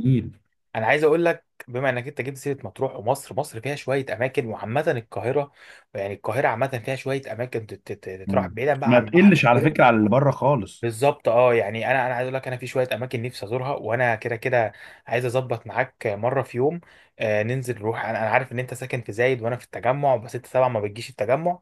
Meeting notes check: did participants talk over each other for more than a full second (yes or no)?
yes